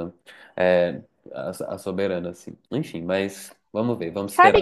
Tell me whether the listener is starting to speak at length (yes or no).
yes